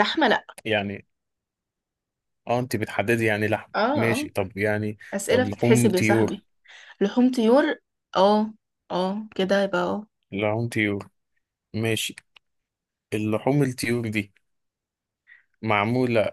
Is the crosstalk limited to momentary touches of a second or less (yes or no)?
no